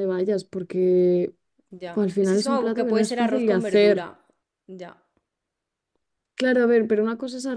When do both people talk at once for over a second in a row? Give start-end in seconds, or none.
1.9-4.1